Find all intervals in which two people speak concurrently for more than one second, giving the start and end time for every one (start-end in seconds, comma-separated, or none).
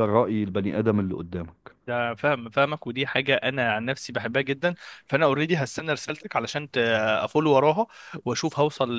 none